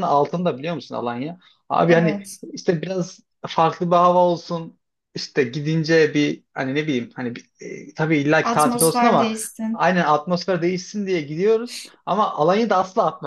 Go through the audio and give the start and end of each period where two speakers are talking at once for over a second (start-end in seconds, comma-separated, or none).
8.4-9.9